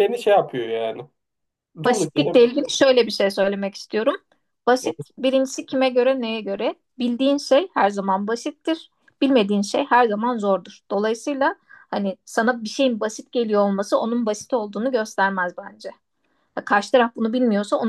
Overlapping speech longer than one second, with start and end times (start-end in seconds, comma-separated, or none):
none